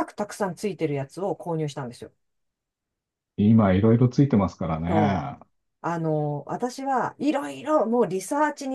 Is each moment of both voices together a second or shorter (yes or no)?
yes